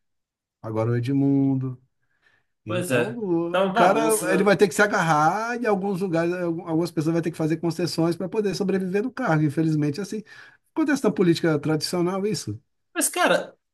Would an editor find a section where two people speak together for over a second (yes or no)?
yes